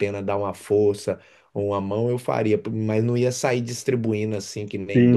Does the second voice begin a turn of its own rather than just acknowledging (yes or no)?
yes